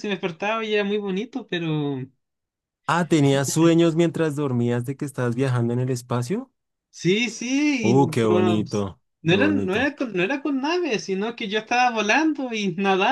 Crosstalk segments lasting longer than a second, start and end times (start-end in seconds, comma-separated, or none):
7.8-9.9